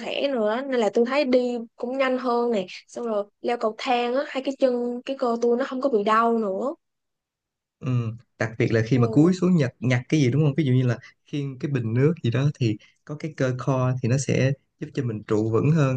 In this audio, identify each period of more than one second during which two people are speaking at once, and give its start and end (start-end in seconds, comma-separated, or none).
none